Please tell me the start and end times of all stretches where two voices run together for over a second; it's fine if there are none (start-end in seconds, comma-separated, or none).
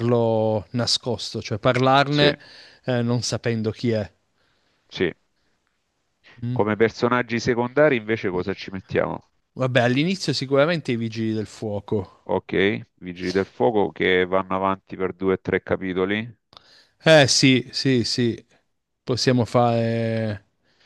none